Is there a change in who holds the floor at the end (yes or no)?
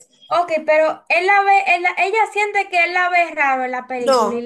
yes